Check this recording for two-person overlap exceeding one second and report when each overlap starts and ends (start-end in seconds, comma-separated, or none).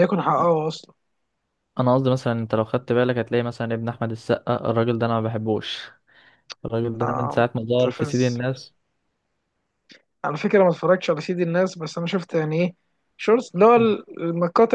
7.0-8.4